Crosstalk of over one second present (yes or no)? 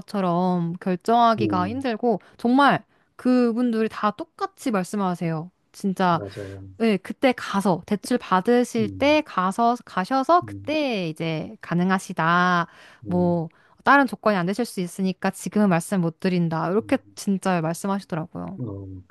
no